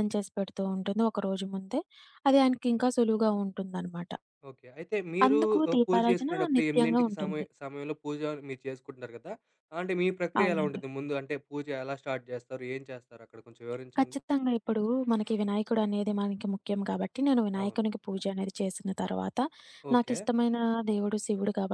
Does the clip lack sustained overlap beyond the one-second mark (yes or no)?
no